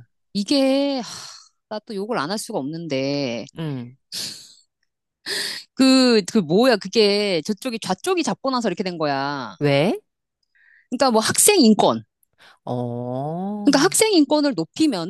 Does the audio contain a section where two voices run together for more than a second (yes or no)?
no